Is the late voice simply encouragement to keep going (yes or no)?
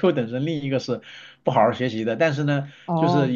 yes